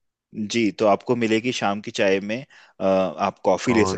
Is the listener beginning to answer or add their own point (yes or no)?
yes